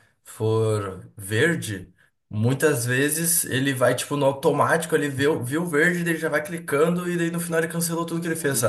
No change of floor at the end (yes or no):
no